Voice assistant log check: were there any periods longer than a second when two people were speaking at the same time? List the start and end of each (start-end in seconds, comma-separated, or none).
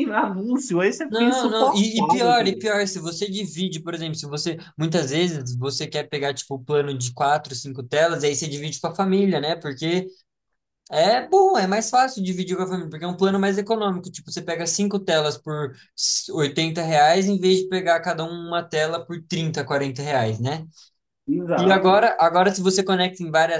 1.1-2.7